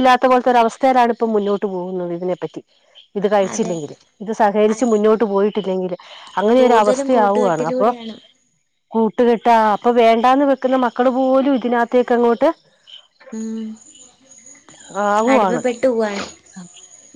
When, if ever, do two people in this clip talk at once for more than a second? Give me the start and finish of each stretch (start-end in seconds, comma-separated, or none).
6.6-7.9